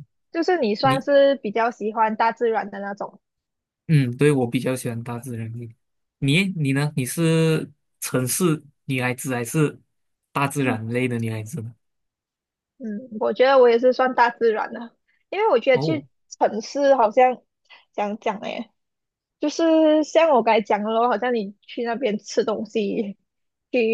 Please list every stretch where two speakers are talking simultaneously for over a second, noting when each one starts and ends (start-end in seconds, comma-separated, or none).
none